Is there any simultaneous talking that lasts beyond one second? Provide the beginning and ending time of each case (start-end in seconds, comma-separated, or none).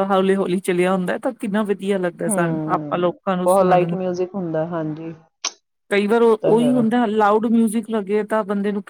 2.3-4.0